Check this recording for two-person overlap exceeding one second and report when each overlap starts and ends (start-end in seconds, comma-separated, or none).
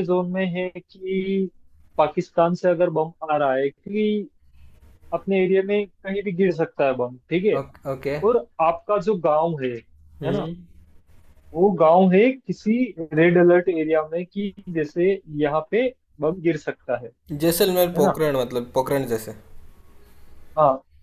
none